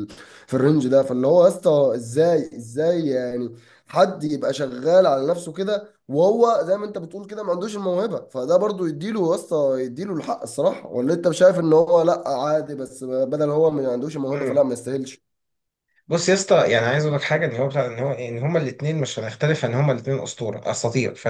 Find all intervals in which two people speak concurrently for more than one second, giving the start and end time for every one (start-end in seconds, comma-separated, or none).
none